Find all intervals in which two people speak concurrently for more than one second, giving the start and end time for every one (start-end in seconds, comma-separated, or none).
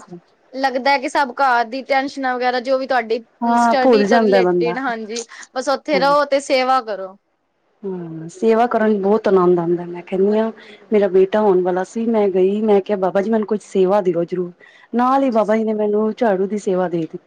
3.4-4.7